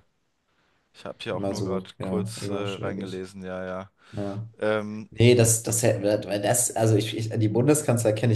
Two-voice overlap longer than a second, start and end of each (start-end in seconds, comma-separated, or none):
1.3-3.3